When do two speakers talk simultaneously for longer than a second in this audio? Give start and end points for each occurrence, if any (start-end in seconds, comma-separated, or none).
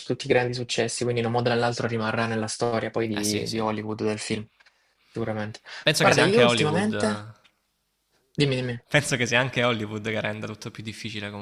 6.0-7.3